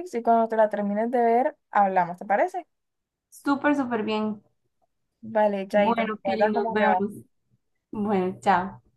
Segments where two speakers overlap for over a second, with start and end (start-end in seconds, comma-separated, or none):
5.7-7.0